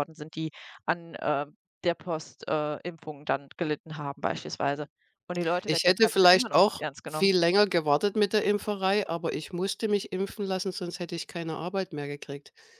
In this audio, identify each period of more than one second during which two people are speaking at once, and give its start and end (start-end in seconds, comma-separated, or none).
5.6-7.3